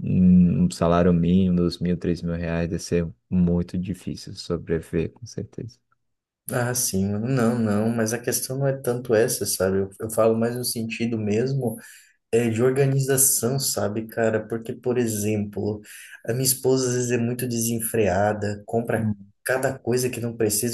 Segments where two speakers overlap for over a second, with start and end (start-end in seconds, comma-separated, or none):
none